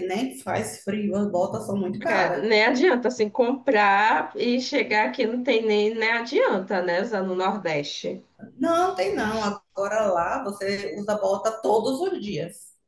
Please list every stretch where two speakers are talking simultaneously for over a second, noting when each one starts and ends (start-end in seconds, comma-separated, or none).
none